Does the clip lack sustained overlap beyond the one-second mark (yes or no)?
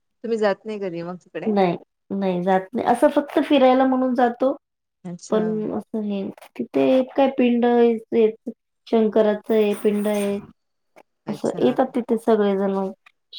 yes